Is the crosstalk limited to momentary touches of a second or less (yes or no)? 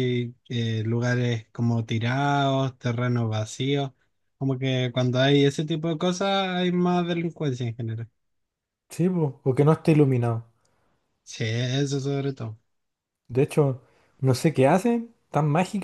yes